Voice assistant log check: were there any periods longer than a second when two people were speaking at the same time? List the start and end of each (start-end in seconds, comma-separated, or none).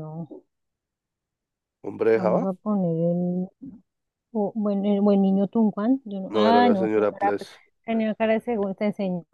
6.3-7.5